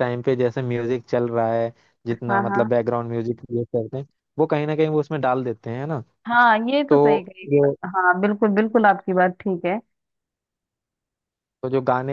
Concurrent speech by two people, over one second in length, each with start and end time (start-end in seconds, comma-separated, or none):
none